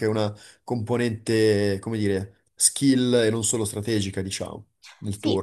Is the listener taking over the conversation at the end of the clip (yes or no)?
yes